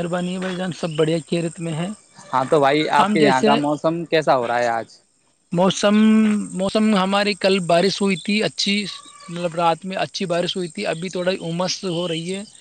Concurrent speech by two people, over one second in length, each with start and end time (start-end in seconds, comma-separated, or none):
none